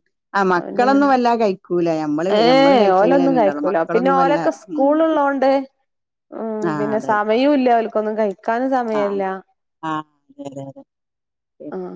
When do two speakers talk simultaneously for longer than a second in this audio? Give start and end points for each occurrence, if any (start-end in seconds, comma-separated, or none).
2.4-4.4